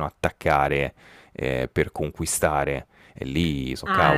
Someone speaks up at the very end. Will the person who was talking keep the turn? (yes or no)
no